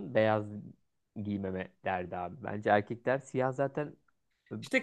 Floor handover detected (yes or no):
yes